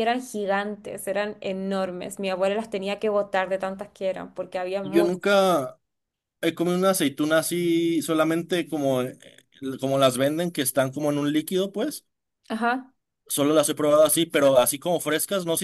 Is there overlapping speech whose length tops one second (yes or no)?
no